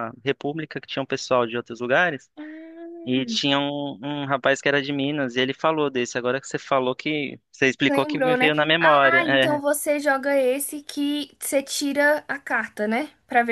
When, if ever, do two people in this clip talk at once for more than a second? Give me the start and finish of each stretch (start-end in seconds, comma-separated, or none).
7.9-9.2